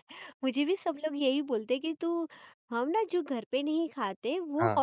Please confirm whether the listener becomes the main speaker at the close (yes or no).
no